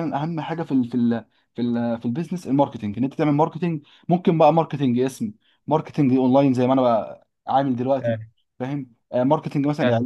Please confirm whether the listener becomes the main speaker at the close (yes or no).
no